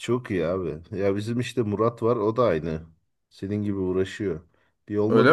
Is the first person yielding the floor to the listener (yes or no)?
no